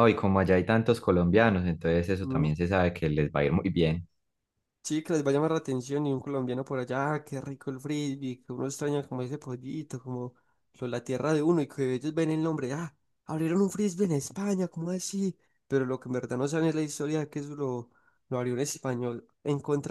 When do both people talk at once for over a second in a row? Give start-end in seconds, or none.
none